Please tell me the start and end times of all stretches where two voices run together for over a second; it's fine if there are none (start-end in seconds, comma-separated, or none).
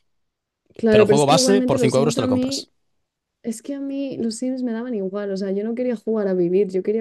0.9-2.7